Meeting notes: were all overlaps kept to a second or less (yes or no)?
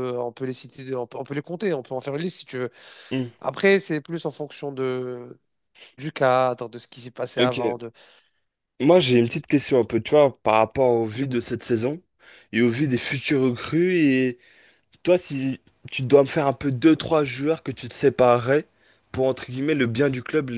yes